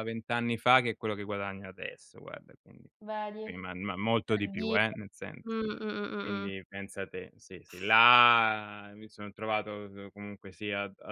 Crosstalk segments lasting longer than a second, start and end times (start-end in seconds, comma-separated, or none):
none